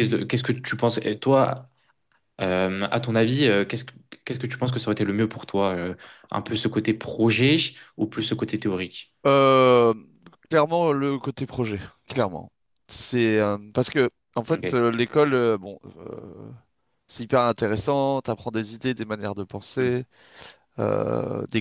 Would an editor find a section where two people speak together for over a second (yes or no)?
no